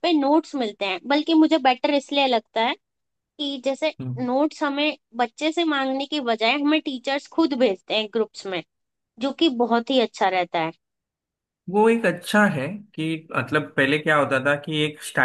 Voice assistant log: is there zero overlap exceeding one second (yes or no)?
yes